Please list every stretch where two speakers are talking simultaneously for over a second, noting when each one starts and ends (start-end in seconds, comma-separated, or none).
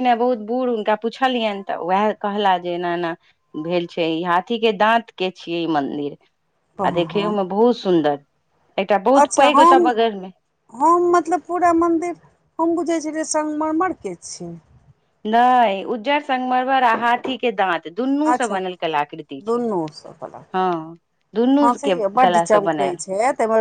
none